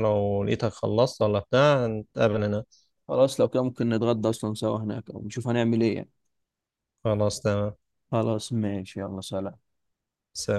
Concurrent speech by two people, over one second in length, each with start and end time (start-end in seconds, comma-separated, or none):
none